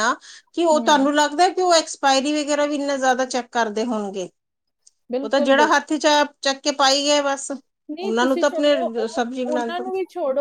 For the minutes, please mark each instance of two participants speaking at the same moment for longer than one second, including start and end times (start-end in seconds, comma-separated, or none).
8.0-9.8